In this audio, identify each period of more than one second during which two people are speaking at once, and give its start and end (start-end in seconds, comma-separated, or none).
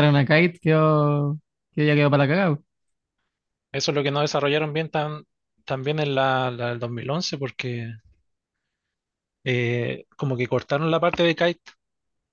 none